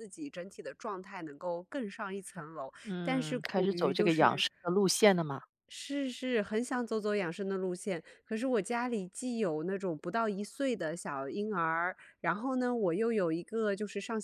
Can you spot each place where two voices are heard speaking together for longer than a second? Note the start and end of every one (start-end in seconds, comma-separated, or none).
2.9-4.4